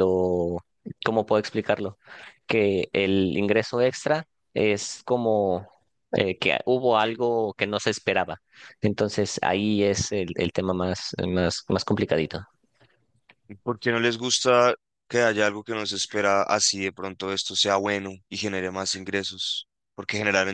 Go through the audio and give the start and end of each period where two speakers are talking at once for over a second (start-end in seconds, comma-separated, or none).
none